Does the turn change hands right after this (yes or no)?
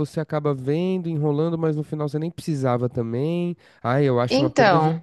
no